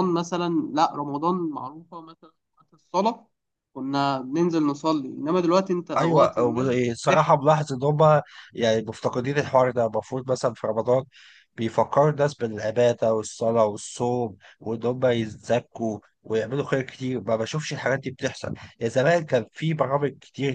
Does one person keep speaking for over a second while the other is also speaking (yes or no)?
no